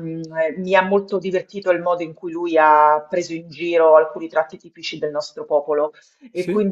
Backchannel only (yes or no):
yes